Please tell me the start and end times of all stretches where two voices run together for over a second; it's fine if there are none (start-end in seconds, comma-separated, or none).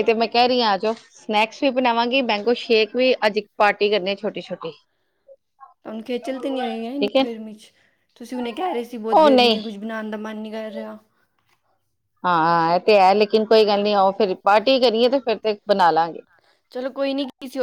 none